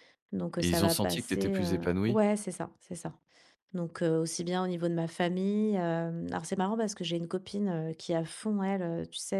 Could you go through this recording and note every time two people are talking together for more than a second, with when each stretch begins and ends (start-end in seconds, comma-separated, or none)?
0.6-2.2